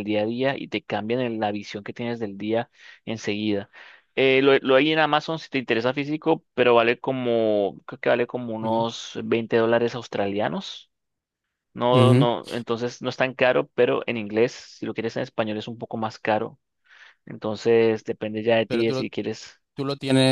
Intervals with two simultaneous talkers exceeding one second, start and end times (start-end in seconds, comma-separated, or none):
none